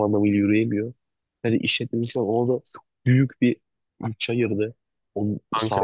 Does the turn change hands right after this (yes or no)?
no